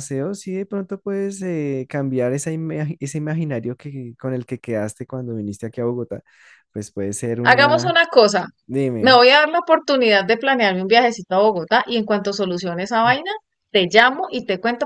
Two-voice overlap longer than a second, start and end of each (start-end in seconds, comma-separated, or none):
none